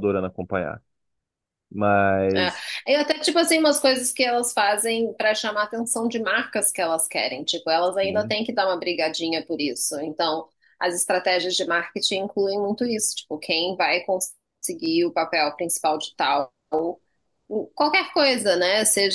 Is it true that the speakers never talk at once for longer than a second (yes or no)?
yes